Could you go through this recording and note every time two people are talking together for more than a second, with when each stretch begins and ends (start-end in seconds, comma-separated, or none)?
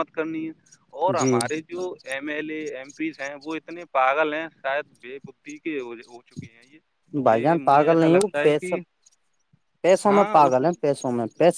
7.3-8.8